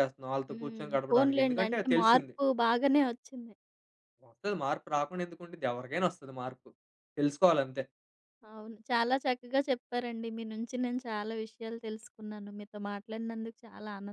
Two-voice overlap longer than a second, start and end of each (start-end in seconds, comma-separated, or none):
0.5-2.4